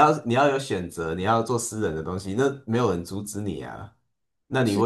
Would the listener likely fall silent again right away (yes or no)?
yes